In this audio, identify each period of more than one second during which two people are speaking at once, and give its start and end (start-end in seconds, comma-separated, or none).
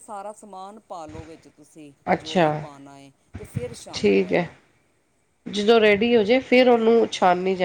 none